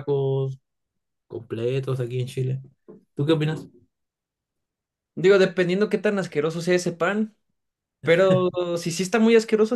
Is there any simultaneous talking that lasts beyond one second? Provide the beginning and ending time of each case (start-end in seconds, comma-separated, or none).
none